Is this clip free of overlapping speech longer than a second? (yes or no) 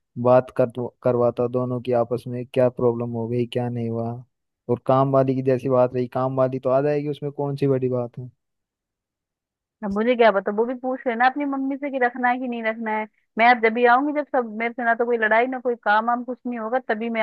yes